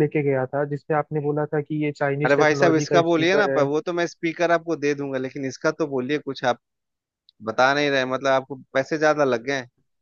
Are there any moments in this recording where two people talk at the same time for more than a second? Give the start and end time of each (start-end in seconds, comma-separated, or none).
2.2-3.7